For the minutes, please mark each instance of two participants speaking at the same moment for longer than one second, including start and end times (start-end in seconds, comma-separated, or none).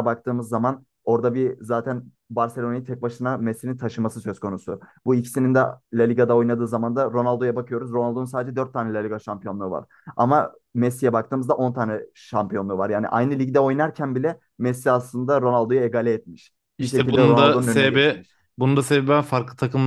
16.8-18.4